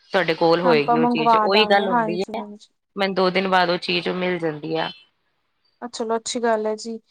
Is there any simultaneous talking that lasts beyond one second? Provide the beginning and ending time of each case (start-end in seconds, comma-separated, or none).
0.7-2.4